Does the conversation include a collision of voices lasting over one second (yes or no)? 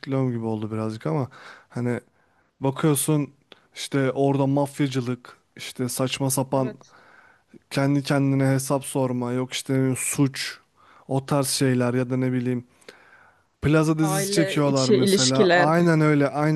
yes